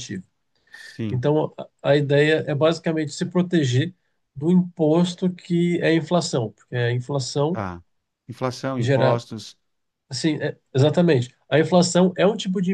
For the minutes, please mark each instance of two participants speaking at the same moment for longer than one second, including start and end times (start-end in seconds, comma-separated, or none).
none